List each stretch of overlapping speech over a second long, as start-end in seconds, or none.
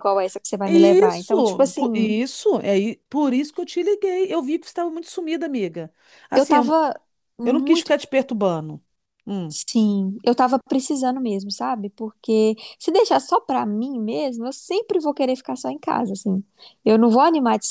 0.6-2.2